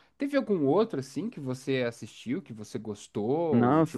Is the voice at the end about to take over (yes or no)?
yes